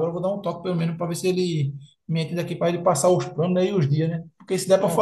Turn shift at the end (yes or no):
no